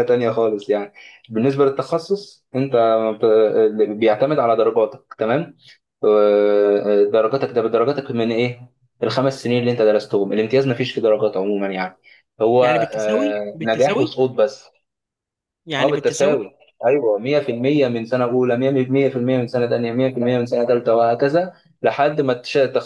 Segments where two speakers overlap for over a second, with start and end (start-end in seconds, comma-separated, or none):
12.6-14.2